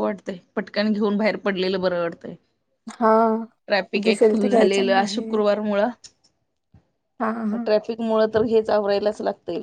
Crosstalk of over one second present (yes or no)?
yes